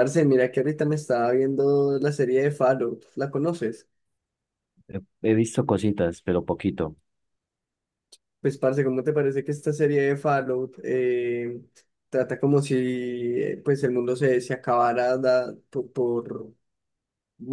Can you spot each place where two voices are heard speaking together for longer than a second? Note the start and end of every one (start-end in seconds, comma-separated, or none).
none